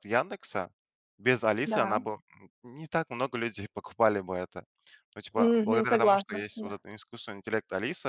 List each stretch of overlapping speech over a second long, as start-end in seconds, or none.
5.3-6.8